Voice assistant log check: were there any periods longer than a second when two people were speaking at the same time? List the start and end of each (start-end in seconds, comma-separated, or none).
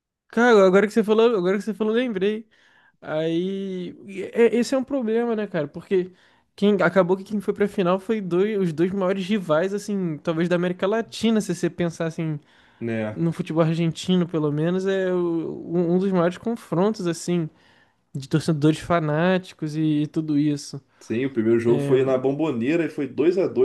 none